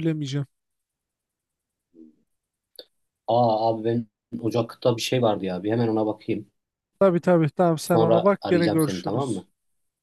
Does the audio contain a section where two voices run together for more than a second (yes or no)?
yes